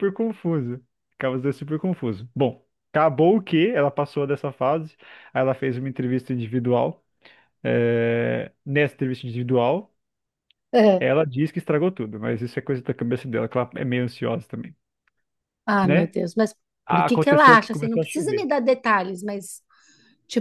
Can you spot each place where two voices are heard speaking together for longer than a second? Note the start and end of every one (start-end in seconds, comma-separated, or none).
16.9-18.5